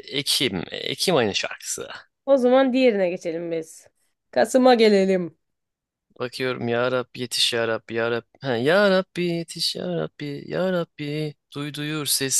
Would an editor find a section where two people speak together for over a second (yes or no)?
no